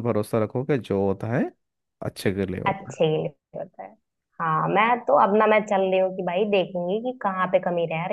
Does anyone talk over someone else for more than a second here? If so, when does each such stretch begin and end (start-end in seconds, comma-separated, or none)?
none